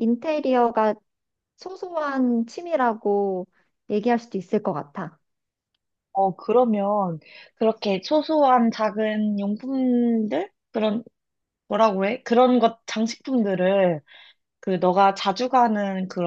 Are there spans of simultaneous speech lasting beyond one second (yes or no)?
no